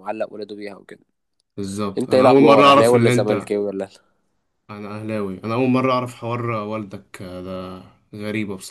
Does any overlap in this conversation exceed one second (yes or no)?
yes